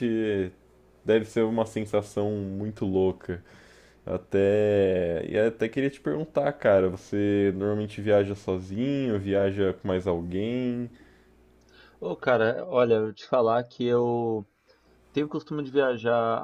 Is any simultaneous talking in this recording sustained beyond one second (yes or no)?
no